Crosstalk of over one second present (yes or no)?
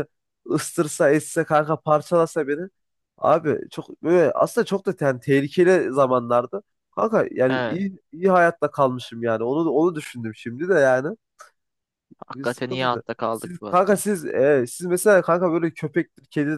yes